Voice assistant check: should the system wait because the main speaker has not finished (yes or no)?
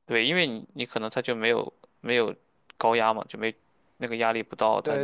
no